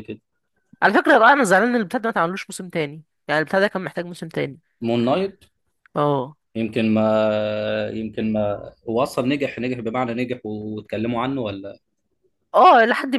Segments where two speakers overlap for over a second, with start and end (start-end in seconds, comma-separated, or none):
none